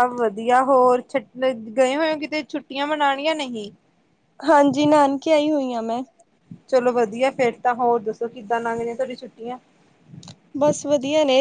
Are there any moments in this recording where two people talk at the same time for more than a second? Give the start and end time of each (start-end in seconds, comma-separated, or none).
none